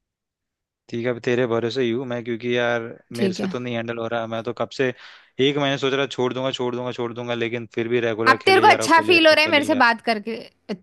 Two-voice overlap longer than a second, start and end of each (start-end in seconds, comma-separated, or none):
8.3-9.9